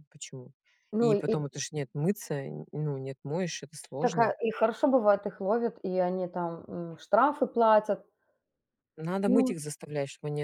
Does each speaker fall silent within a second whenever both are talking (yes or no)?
yes